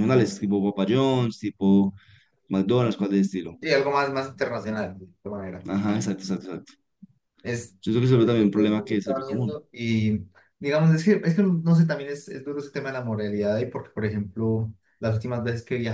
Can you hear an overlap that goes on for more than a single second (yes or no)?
no